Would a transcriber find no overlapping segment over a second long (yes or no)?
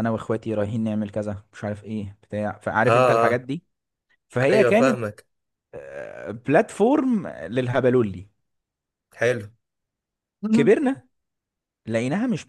yes